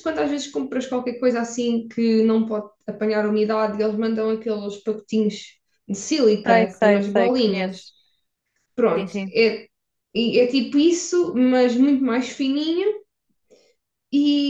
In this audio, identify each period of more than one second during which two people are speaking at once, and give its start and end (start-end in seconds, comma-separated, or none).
6.5-7.8